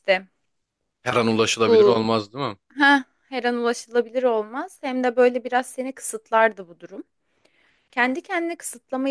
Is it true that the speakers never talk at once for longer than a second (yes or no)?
yes